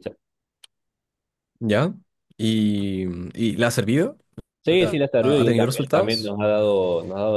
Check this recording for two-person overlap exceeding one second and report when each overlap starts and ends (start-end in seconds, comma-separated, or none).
4.7-6.3